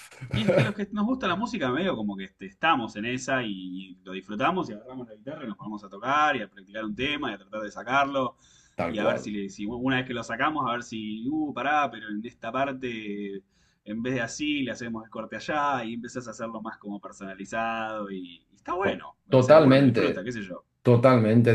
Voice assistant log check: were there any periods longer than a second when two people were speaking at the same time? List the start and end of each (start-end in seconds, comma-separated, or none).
18.8-20.3